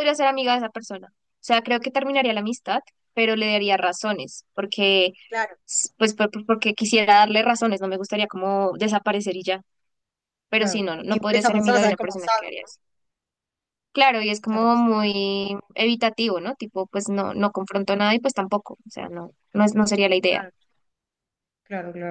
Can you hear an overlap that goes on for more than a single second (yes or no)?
yes